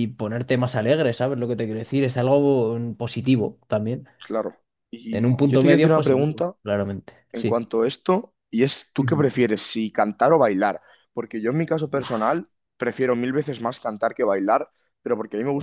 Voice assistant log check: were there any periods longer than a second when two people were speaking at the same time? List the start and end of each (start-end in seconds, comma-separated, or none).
5.1-6.5